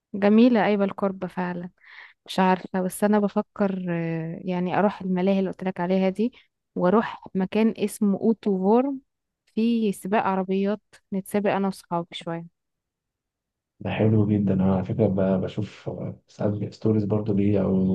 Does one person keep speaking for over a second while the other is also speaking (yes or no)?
no